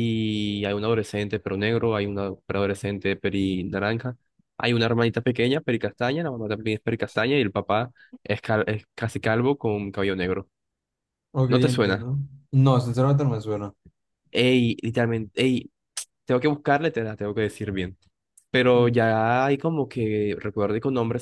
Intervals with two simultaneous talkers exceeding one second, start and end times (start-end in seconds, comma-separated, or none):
none